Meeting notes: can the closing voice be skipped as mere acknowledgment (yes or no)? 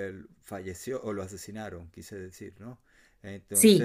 no